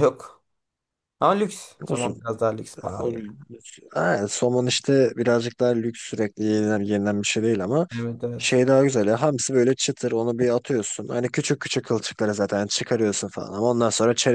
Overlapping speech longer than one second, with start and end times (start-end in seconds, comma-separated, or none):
none